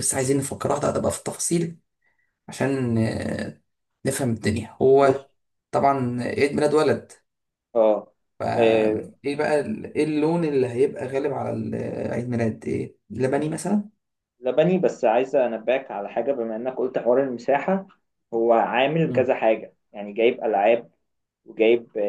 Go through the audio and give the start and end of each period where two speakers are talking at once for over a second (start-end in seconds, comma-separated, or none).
none